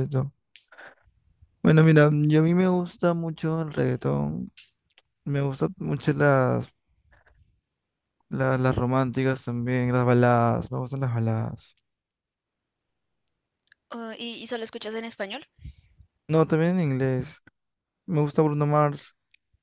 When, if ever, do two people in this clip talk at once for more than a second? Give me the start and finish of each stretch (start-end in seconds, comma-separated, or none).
none